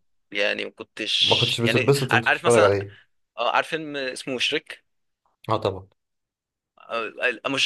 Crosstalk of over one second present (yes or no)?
yes